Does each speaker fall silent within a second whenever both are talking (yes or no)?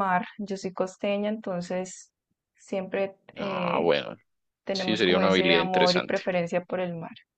no